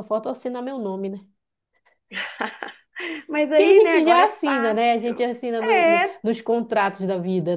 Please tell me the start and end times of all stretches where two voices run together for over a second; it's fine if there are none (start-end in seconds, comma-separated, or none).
3.5-6.2